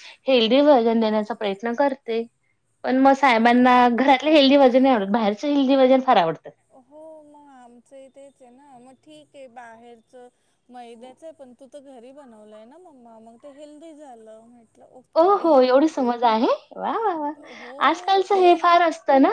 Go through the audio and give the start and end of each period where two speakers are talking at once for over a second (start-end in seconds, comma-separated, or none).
none